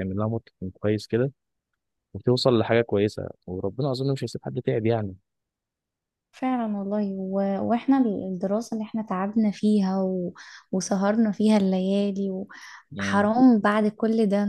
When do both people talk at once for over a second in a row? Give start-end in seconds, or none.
none